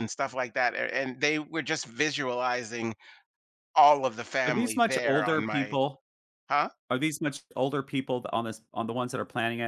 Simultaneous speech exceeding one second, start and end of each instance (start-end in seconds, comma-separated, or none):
4.5-5.8